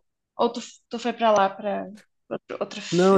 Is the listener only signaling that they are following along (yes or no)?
no